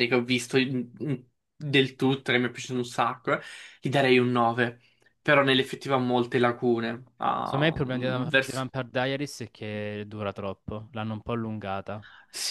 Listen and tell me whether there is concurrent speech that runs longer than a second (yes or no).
yes